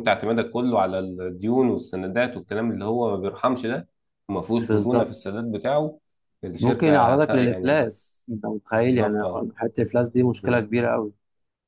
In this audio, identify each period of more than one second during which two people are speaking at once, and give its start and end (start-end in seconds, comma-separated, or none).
6.6-7.9